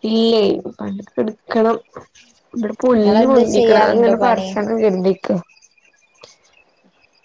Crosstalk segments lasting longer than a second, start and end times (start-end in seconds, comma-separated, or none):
2.9-4.5